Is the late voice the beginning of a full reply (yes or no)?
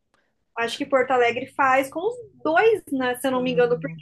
no